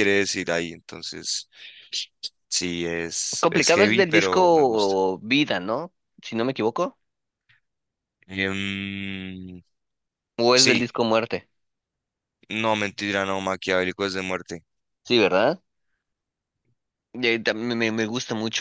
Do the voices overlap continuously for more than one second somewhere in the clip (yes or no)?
yes